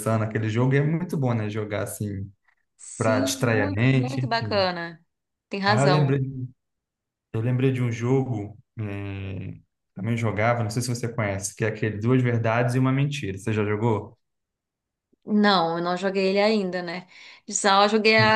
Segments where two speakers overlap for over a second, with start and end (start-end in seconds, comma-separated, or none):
3.0-4.7